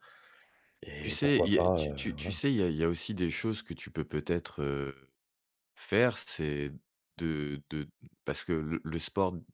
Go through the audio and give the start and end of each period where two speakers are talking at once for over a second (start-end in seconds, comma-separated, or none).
1.0-2.4